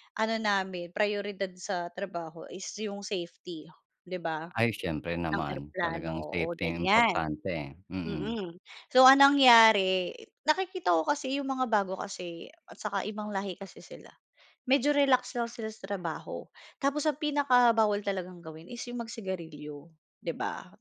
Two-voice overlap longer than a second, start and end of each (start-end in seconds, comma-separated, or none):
5.4-7.2